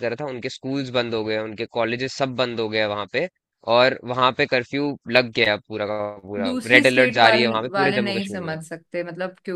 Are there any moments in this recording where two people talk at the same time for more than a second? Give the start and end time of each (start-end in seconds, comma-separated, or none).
6.4-8.6